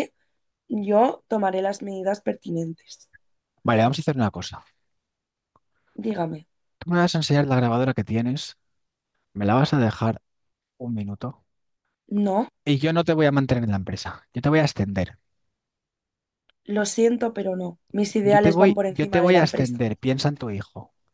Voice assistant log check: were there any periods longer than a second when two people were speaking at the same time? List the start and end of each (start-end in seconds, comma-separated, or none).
18.2-19.9